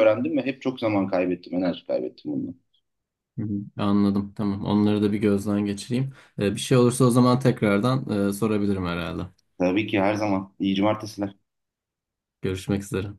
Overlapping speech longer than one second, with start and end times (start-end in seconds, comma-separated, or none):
none